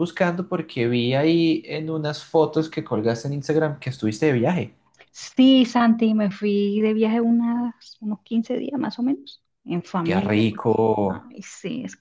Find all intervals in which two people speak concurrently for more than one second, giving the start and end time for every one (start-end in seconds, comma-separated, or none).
10.0-11.3